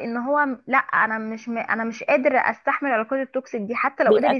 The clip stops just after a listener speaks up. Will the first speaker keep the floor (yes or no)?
yes